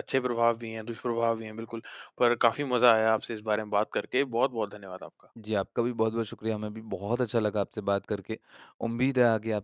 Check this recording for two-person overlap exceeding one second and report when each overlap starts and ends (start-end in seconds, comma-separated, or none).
none